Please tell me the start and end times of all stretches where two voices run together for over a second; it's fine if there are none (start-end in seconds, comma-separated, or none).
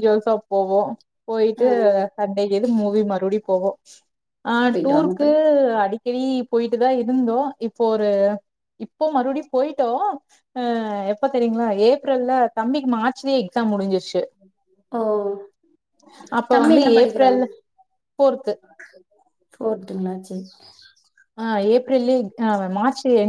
none